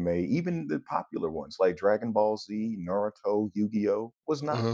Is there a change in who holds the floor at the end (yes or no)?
no